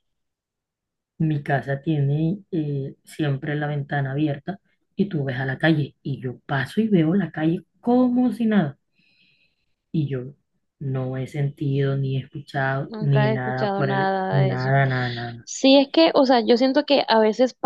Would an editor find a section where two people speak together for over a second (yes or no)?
yes